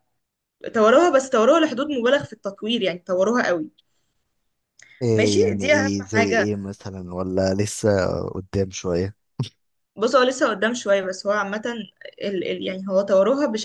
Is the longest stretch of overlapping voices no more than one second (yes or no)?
no